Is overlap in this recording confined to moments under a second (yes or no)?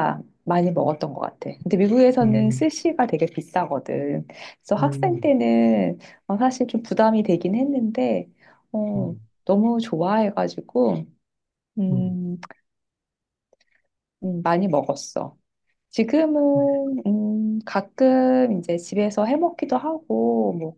yes